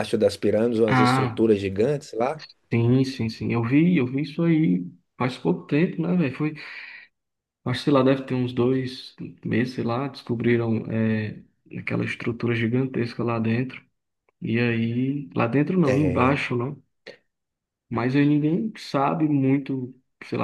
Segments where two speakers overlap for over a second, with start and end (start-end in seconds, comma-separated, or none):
none